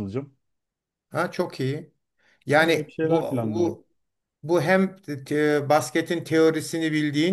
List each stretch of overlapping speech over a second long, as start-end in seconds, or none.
2.6-3.8